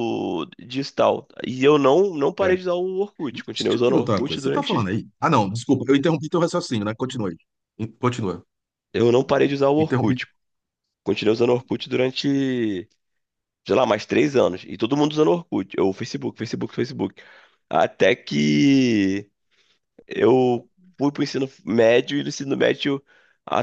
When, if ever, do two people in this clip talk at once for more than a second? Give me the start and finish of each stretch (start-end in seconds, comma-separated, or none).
3.3-4.9